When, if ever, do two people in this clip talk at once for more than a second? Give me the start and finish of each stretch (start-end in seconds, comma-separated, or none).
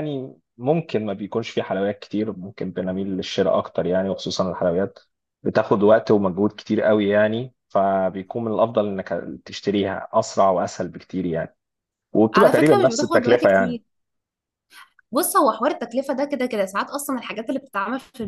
12.3-13.8